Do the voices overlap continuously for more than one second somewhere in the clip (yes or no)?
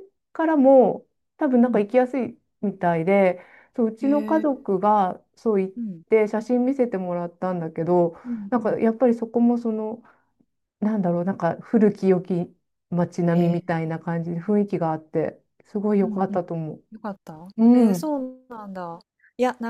no